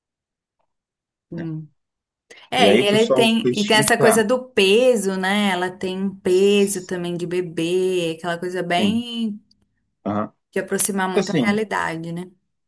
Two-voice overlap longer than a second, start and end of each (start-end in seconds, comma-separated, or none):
2.6-4.3